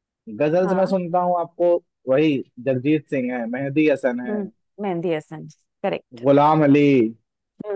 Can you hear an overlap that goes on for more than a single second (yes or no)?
no